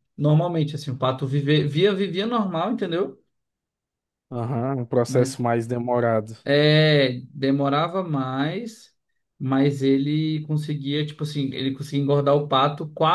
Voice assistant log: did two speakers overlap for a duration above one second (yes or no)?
no